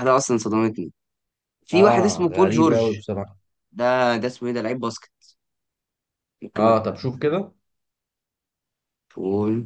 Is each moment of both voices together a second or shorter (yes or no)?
no